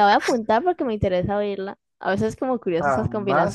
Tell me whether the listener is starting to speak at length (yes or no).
yes